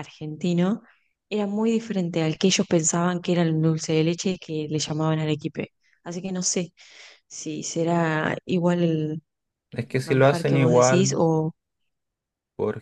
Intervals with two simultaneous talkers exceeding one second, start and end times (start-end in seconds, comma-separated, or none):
9.8-11.2